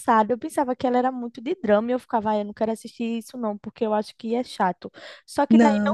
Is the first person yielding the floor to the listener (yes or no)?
no